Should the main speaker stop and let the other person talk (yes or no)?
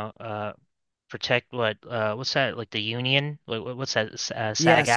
yes